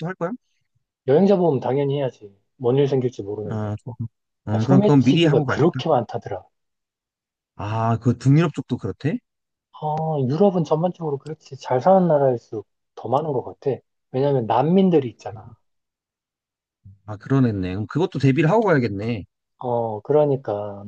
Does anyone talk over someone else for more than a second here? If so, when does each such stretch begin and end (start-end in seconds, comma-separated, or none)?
4.5-5.8